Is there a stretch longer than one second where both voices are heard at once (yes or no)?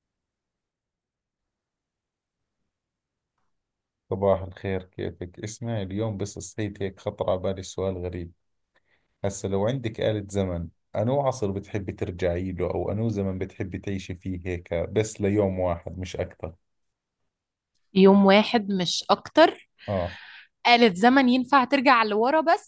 no